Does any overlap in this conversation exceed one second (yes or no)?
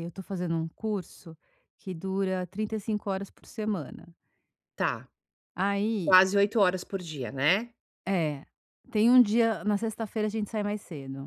no